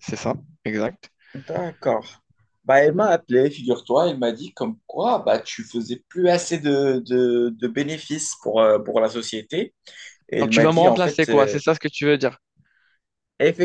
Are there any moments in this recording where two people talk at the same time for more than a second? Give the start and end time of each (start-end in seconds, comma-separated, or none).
10.4-11.6